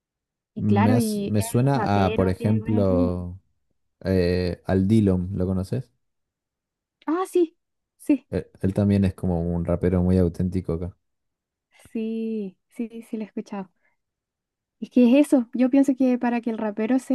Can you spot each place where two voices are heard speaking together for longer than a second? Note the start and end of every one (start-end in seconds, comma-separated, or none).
0.6-3.1